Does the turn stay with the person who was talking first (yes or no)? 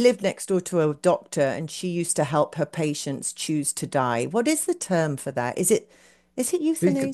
no